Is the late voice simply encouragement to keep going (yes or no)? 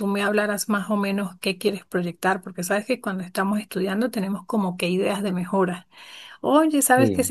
yes